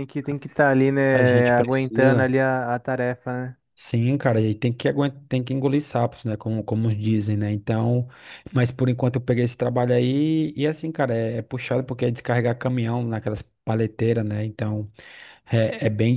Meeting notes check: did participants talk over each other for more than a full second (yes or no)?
yes